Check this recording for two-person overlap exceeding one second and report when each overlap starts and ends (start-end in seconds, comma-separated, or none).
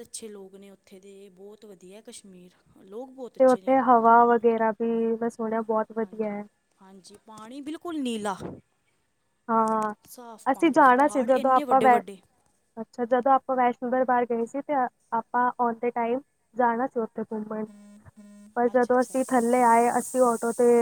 10.5-12.0